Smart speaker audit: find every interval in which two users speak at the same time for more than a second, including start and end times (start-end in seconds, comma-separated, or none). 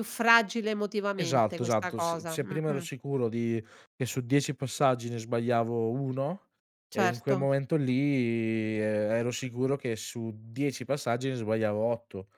1.2-2.9